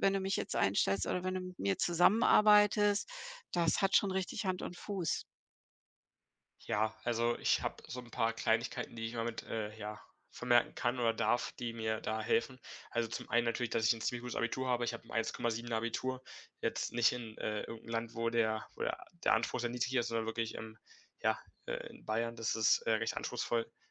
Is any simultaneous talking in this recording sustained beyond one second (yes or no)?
no